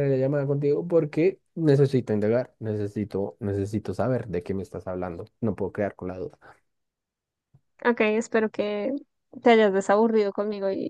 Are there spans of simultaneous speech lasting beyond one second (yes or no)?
no